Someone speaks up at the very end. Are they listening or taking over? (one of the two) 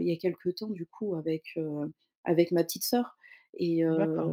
listening